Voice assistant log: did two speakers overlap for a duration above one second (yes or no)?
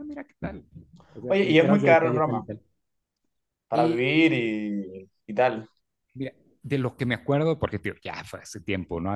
yes